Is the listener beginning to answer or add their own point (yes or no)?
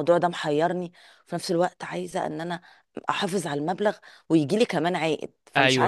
yes